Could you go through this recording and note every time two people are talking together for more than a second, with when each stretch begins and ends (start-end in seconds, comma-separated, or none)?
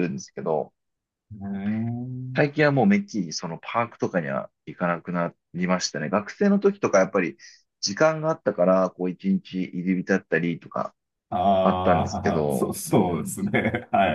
11.6-13.3